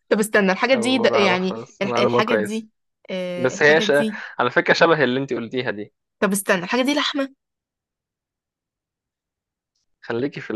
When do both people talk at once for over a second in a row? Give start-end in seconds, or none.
0.7-2.6